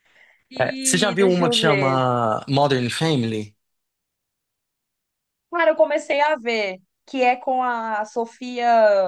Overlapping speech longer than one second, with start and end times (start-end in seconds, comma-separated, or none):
0.6-2.0